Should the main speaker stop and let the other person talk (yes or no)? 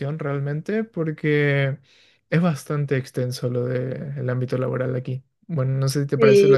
yes